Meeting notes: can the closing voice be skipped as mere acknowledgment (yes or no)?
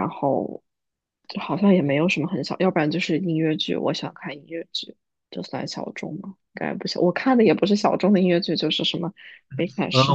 no